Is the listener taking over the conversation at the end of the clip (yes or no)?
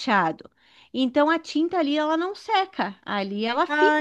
yes